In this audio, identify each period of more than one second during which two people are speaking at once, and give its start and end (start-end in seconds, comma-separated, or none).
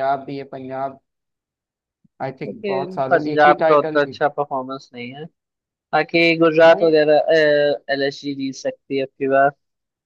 2.5-4.2